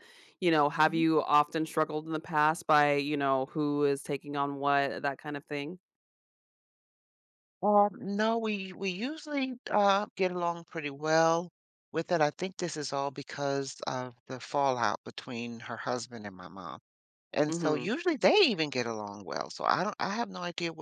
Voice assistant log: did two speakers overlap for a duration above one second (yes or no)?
no